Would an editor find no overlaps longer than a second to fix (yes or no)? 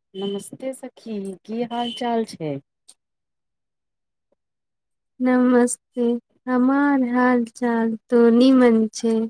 yes